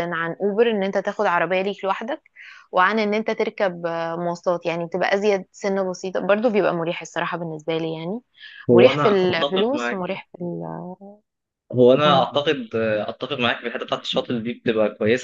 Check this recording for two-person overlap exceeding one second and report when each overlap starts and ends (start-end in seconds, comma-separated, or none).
8.7-10.2